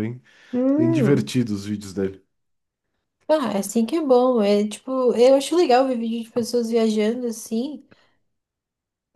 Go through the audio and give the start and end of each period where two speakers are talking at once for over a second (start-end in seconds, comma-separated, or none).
none